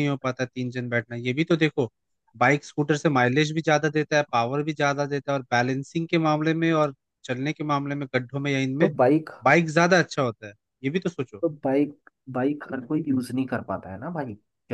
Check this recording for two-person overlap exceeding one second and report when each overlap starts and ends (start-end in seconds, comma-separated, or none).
none